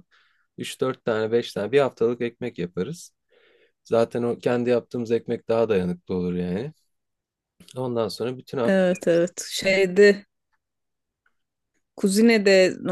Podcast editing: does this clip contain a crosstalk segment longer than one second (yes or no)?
no